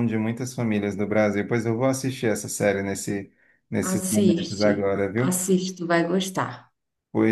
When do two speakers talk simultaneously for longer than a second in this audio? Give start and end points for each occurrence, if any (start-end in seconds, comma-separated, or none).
3.8-5.3